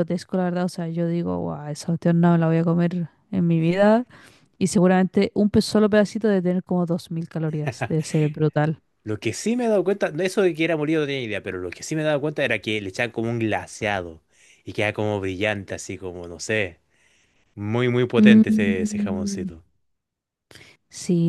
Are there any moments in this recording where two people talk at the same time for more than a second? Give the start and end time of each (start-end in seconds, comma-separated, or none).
18.2-19.5